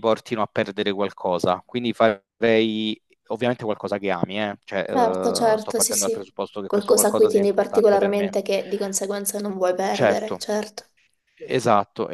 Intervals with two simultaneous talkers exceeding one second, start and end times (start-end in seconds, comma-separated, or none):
4.9-8.3